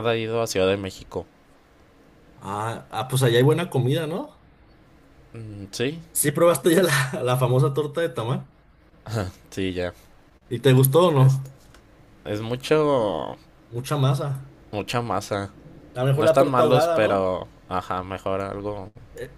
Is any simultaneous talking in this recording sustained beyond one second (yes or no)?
yes